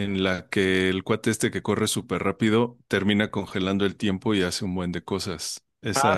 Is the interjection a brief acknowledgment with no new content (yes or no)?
yes